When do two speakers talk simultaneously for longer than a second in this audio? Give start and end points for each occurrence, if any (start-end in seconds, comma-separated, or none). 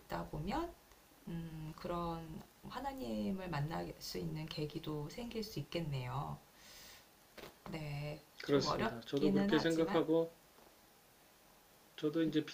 8.4-10.1